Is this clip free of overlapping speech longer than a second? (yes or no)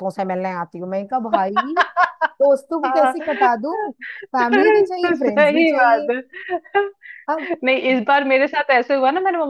no